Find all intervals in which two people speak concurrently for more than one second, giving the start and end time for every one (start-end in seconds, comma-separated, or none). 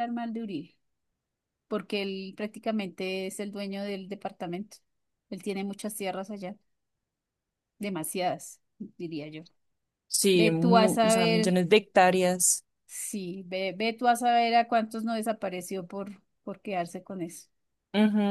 10.3-11.6